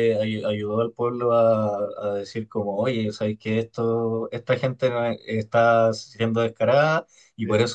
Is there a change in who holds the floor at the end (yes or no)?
no